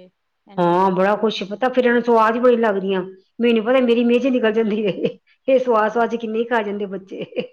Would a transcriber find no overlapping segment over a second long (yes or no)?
no